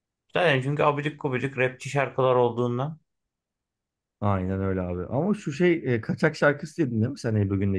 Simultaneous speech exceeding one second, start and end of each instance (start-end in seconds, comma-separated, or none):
none